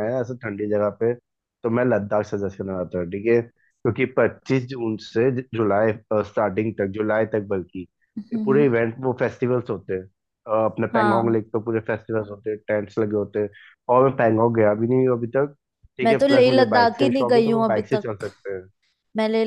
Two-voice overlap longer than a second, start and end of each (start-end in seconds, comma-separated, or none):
16.0-18.3